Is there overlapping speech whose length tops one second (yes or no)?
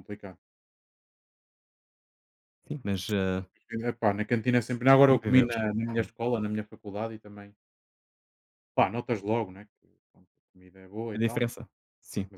no